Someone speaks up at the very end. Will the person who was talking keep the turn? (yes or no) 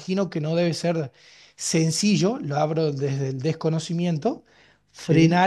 yes